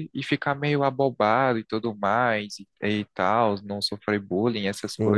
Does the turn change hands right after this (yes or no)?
yes